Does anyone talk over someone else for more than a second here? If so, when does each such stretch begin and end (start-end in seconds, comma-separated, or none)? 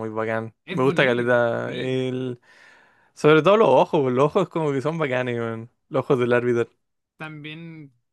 0.7-2.0